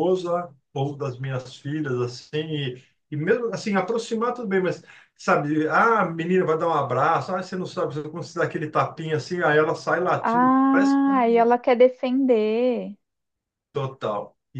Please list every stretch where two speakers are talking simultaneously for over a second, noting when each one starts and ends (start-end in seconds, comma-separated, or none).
10.2-11.5